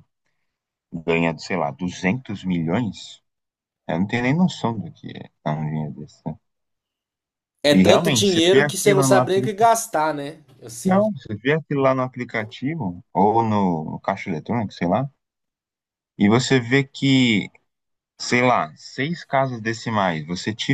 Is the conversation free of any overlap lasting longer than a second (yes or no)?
no